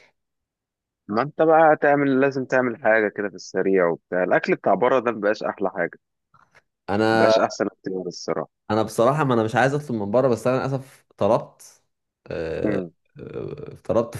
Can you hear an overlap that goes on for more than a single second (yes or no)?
no